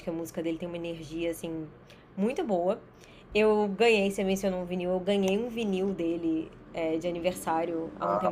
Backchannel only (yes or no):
yes